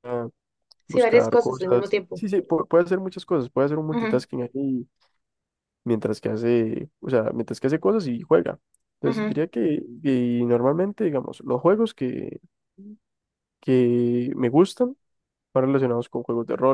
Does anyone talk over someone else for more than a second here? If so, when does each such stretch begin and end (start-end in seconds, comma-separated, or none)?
0.9-2.2